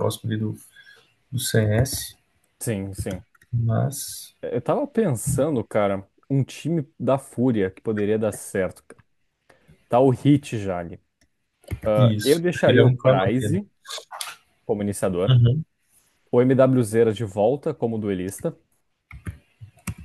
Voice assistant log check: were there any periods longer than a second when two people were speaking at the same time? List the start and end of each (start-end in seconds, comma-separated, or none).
12.0-13.6